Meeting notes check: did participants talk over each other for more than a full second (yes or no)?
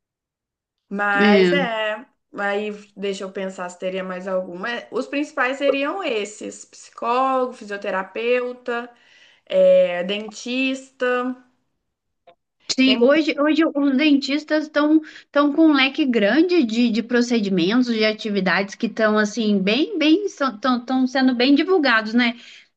no